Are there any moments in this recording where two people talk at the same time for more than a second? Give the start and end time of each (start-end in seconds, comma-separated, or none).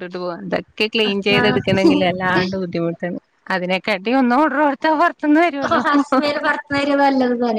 none